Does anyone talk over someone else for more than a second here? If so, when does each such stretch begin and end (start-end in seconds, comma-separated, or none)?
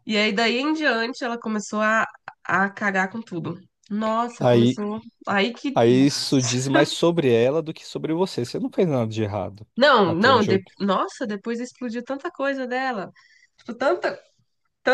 none